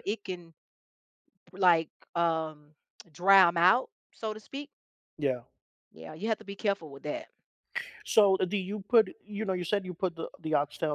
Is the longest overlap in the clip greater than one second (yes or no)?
no